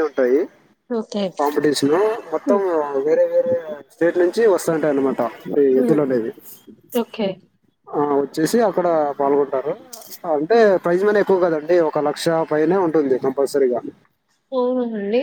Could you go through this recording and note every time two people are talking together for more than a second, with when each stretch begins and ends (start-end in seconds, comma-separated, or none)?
none